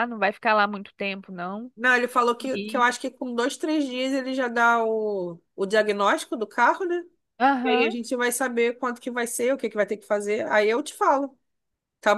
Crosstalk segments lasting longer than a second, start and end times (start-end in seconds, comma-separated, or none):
none